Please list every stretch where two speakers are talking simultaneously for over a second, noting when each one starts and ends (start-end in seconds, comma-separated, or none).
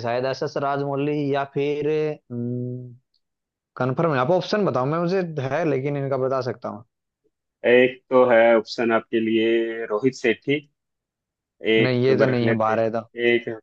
11.8-13.0